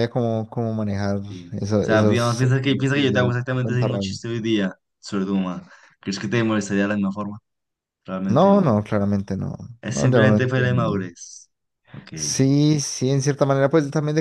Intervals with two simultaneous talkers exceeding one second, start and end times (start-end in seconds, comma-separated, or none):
1.3-4.2, 9.8-11.1